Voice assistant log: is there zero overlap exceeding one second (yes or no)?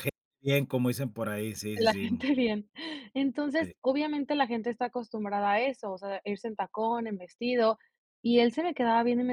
yes